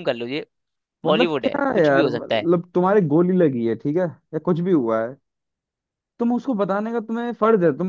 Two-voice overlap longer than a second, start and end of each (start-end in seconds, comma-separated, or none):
1.1-2.5